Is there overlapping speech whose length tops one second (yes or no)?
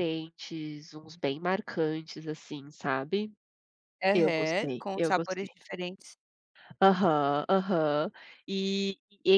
yes